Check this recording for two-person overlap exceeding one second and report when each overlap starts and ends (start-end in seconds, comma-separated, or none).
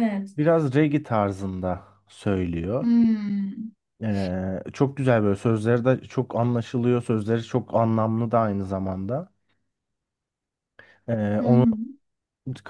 none